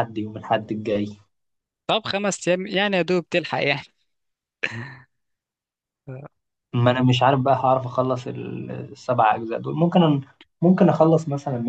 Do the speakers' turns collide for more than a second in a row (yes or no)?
no